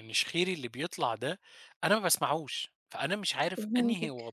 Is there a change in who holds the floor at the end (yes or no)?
no